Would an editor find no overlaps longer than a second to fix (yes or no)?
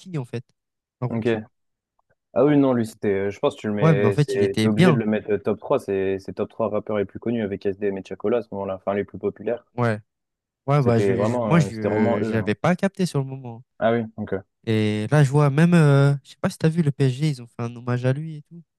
no